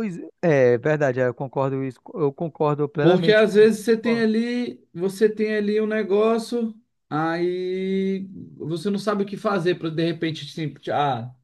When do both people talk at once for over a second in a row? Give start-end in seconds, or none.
3.0-4.3